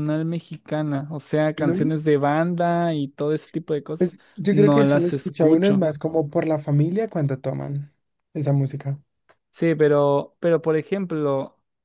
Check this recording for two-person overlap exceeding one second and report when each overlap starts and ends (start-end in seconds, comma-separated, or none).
4.0-5.9